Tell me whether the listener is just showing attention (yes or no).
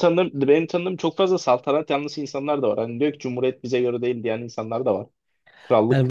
no